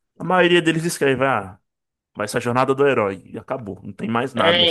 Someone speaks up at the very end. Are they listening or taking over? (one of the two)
taking over